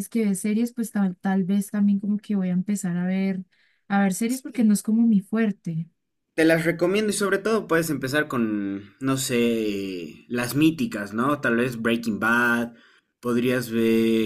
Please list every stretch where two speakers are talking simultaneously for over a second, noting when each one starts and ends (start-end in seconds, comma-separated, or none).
none